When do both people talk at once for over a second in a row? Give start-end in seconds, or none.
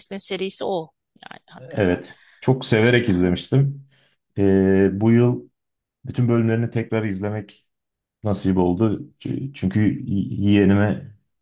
none